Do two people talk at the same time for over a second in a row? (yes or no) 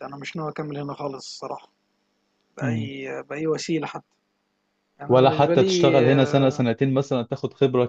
yes